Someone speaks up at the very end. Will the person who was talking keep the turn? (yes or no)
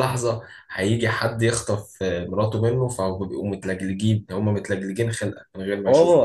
no